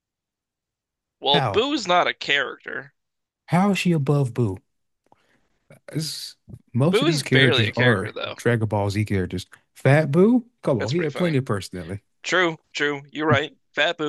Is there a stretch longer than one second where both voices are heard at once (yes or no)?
yes